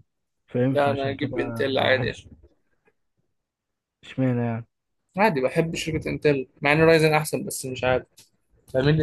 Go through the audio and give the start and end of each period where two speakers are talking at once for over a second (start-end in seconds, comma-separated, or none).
0.7-2.1